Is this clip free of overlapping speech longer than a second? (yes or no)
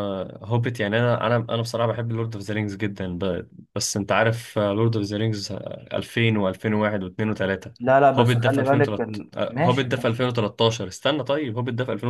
no